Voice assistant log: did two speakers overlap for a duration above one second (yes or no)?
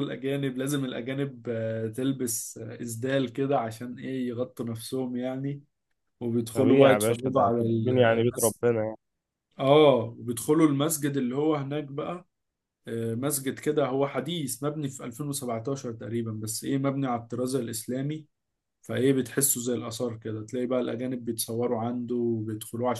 yes